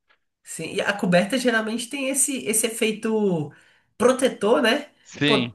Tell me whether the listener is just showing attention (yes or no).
yes